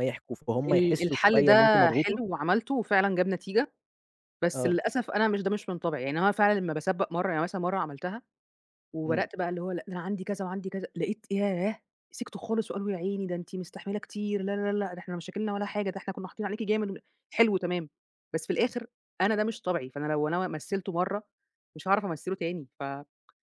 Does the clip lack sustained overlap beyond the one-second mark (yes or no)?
no